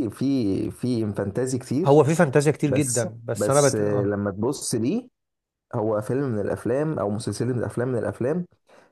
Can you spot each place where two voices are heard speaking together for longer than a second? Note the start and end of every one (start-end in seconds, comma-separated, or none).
2.6-4.1